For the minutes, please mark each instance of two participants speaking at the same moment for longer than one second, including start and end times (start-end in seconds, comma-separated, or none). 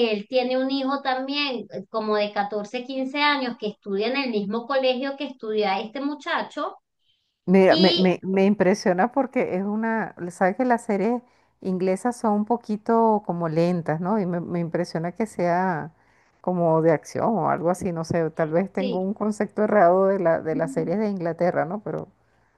none